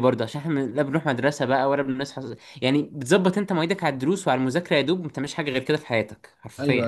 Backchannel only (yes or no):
no